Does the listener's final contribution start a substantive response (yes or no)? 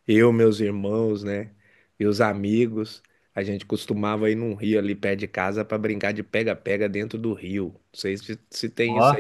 no